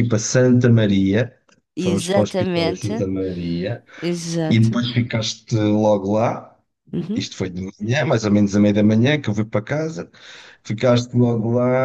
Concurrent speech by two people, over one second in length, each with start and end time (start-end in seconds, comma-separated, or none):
1.8-3.0